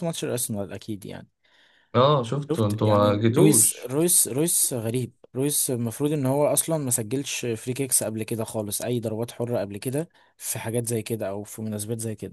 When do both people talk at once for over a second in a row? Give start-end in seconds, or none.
2.5-3.9